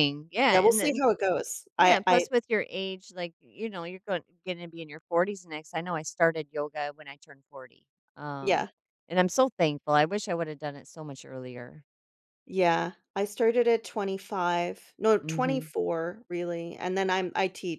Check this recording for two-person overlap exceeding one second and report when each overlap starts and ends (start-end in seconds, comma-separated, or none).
none